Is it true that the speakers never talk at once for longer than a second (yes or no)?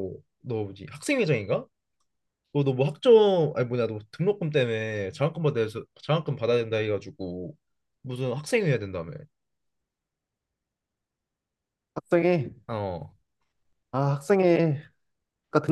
yes